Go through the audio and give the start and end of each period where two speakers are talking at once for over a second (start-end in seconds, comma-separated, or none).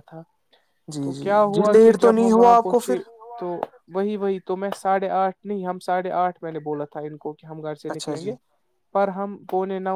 1.0-3.0